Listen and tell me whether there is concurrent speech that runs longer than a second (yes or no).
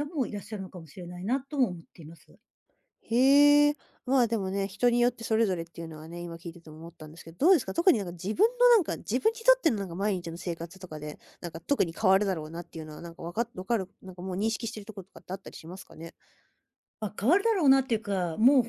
no